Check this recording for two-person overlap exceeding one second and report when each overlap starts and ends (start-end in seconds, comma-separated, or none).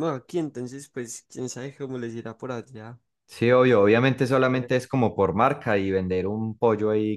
none